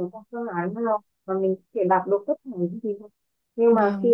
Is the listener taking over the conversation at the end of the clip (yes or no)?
no